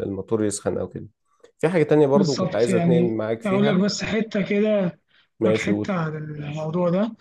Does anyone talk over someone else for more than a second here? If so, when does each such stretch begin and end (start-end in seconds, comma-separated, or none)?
2.1-3.8